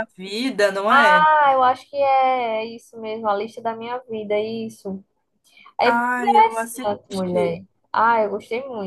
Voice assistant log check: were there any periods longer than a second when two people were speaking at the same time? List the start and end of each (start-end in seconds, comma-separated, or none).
5.8-7.6